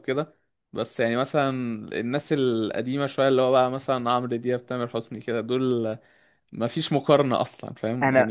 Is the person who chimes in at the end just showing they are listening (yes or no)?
no